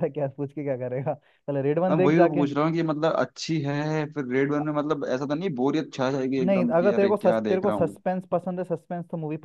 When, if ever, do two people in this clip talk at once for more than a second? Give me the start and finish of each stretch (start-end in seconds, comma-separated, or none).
6.5-8.0